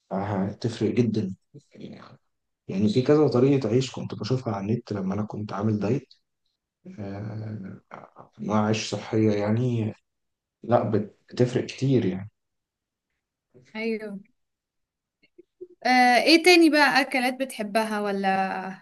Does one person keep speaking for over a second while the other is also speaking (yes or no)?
no